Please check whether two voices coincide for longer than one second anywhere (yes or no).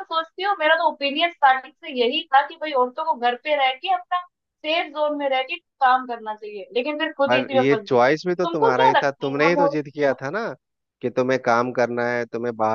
yes